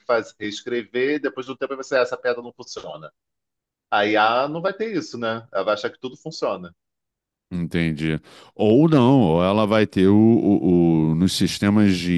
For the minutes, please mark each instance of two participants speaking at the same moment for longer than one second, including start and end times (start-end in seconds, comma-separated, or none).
none